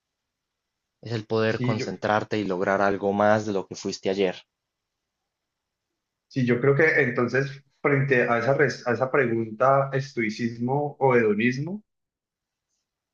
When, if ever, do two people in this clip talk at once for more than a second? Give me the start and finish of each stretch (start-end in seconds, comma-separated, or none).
none